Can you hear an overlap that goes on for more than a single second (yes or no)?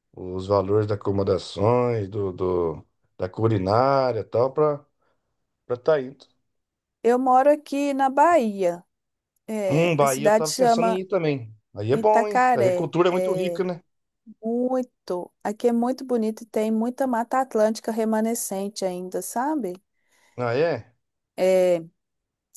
yes